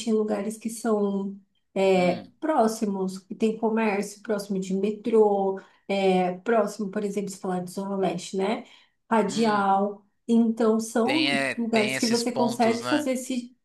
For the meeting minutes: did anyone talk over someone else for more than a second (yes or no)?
yes